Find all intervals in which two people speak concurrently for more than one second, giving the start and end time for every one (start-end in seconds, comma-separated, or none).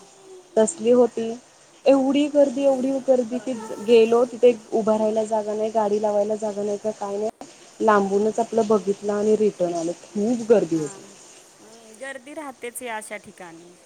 none